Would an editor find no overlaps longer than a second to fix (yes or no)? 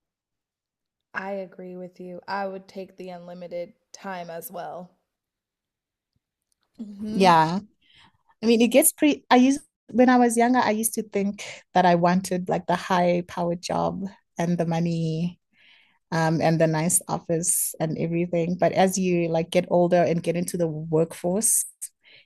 yes